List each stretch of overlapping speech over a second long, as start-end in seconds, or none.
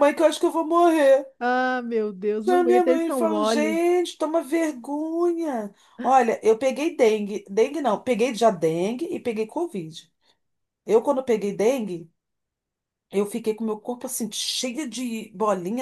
2.5-3.8